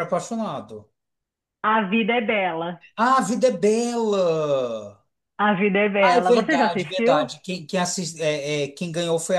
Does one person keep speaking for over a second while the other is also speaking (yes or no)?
yes